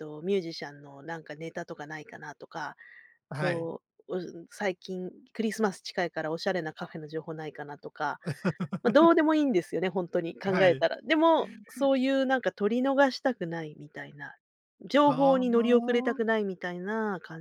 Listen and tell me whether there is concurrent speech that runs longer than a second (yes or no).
yes